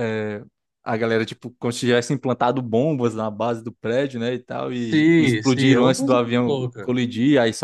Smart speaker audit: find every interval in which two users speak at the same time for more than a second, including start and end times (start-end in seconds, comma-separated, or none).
4.7-6.9